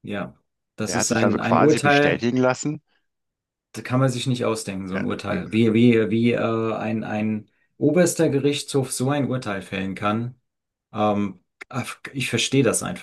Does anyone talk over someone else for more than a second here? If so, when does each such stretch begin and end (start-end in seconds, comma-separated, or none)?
0.9-2.3